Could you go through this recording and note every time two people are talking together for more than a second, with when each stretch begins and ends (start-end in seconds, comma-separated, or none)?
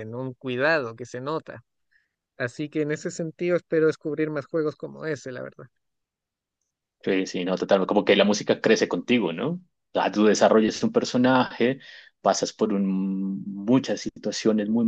none